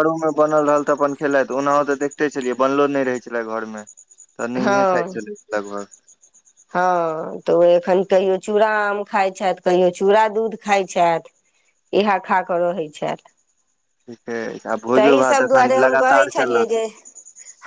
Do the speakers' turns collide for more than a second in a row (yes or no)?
yes